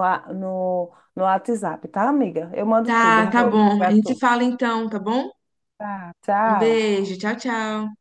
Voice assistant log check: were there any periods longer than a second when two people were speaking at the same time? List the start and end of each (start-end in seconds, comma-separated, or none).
2.9-4.2